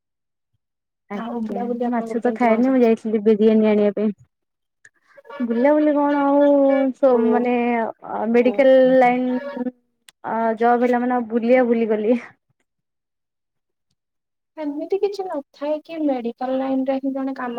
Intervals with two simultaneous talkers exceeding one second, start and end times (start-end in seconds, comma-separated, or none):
1.2-2.9